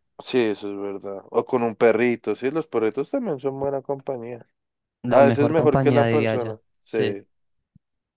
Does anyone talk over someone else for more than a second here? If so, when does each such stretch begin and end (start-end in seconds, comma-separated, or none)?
5.1-7.2